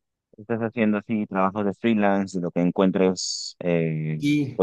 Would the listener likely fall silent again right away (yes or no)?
yes